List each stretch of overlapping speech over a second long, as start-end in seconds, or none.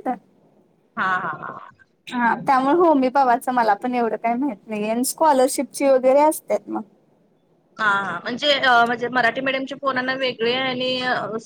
none